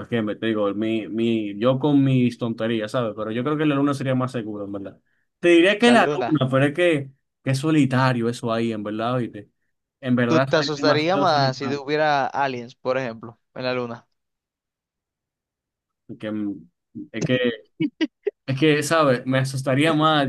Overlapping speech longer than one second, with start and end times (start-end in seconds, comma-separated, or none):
10.3-11.8